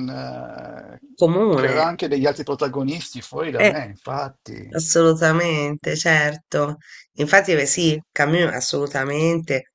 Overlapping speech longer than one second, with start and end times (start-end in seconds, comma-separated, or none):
none